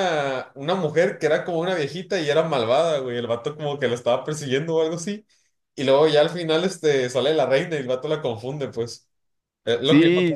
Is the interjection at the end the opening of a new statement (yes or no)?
yes